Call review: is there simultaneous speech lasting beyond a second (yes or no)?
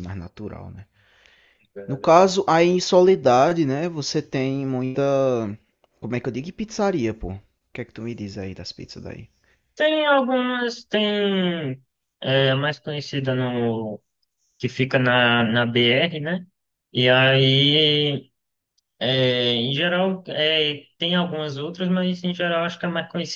no